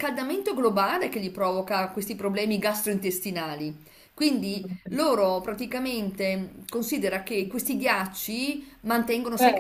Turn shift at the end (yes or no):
no